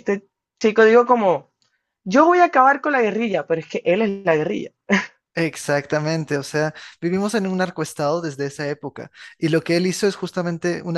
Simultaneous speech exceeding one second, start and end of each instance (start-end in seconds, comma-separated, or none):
none